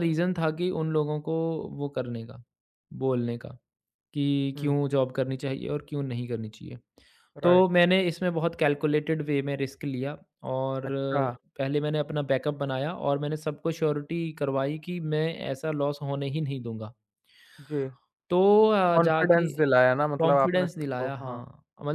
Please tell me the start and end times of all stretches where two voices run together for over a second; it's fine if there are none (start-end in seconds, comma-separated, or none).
20.2-21.4